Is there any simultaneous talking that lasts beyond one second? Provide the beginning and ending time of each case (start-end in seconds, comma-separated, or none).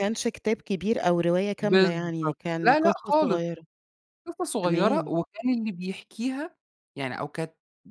1.6-3.4